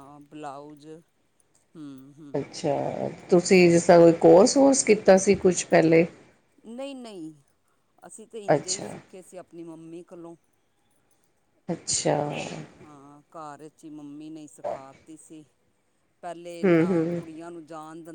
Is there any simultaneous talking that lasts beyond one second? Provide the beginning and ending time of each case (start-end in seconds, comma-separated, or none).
none